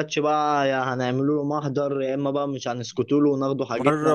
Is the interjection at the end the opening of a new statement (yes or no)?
yes